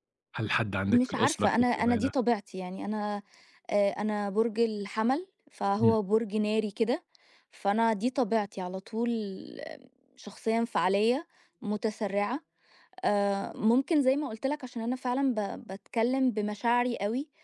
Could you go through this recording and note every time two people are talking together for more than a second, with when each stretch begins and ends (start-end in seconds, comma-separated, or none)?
0.9-2.1